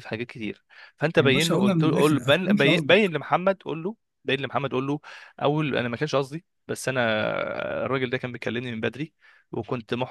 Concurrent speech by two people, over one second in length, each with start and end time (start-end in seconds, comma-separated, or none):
1.2-3.1